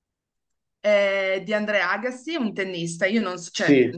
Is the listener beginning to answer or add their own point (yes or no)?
no